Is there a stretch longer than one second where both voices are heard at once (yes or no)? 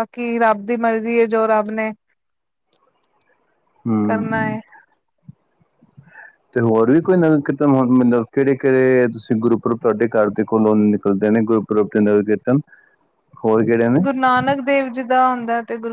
no